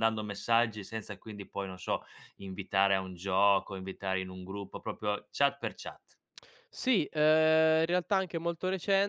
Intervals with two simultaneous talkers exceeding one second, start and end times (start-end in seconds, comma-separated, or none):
none